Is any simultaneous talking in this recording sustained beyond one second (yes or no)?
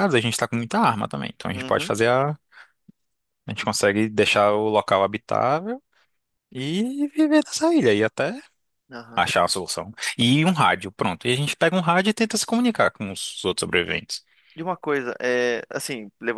no